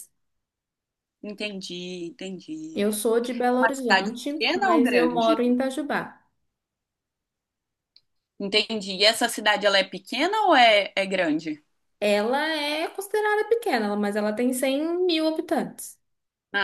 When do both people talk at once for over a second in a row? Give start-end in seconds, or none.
3.5-5.4